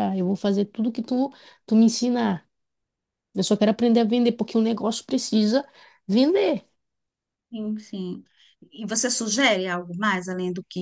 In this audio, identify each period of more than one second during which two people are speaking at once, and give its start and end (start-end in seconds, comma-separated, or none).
none